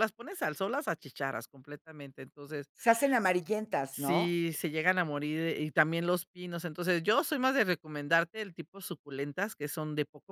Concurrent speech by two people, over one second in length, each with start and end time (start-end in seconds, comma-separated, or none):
none